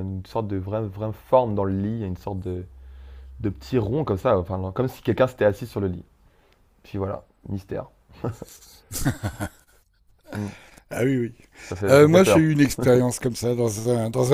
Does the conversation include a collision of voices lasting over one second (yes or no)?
no